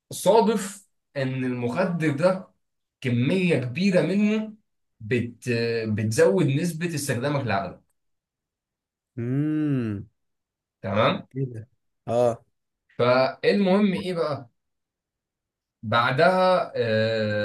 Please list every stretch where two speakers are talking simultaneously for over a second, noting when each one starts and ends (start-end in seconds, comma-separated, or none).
none